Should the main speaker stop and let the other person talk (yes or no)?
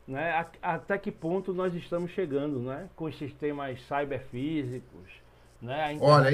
yes